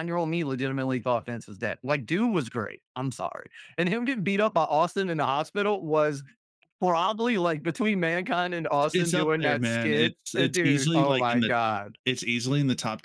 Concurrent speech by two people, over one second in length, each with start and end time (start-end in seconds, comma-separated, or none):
8.9-11.5